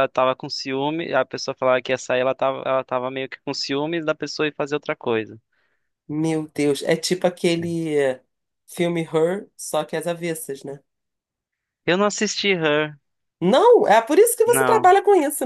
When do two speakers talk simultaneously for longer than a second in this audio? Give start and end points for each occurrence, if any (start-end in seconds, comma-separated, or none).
none